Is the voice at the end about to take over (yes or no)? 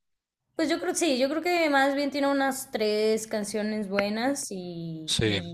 no